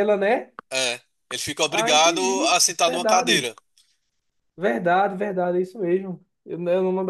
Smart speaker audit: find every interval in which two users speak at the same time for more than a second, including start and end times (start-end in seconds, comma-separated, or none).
1.7-3.5